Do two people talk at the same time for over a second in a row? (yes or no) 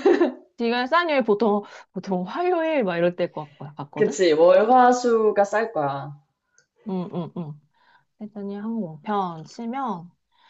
no